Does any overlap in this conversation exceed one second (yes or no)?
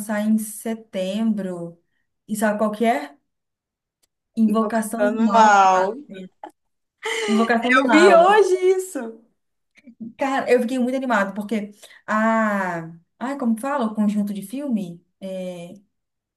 yes